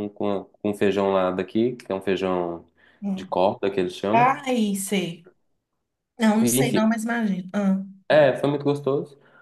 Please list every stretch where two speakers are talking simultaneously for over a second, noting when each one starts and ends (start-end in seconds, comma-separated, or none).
none